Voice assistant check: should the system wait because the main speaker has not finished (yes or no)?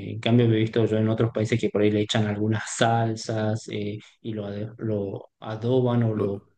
yes